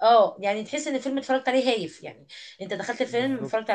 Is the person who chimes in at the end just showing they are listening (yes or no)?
yes